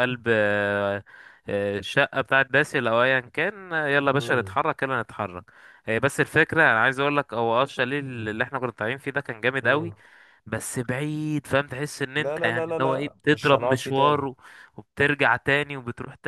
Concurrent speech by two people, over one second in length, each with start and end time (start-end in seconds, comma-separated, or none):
12.2-14.3